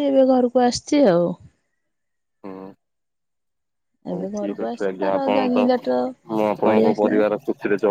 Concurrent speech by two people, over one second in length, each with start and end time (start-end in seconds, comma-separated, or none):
4.1-5.8